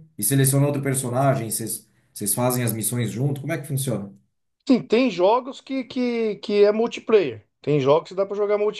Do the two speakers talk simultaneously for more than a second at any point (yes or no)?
no